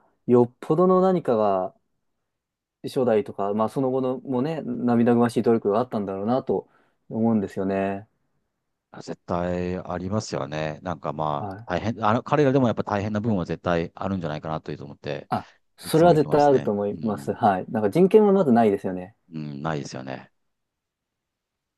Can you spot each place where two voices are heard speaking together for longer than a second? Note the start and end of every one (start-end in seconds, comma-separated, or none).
15.8-17.4